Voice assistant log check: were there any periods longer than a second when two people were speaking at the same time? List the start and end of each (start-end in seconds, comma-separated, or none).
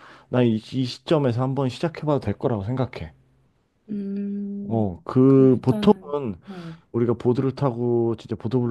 4.7-6.3